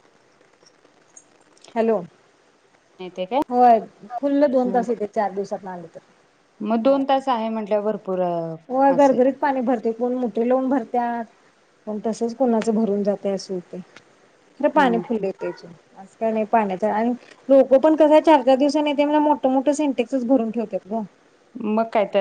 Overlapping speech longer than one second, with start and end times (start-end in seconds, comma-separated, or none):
none